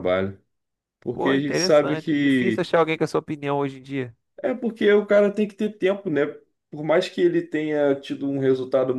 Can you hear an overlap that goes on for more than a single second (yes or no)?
yes